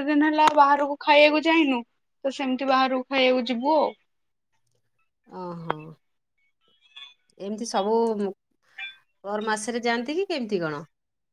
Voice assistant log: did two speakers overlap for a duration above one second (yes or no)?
no